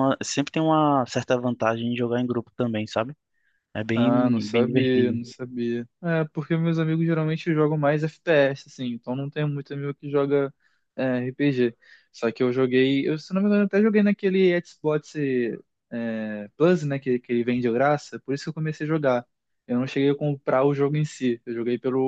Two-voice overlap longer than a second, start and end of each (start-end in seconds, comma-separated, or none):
3.9-5.2